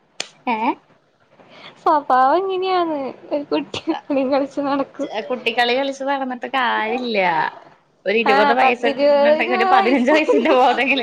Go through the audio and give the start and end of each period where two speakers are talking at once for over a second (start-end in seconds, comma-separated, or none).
8.3-10.5